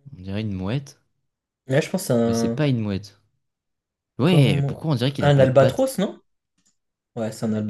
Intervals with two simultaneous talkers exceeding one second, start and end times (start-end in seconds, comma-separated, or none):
4.2-5.9